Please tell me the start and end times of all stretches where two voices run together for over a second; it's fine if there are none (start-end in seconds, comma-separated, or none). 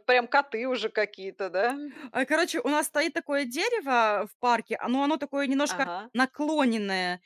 none